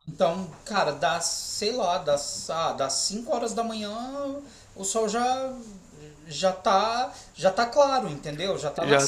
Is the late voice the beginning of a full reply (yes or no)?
yes